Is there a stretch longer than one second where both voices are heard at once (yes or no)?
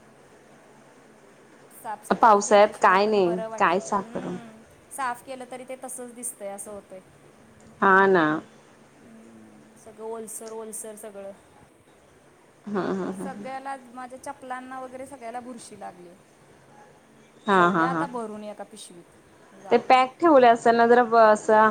yes